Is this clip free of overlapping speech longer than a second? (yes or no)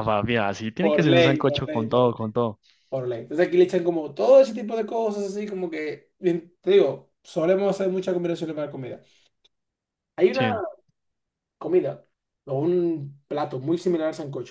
no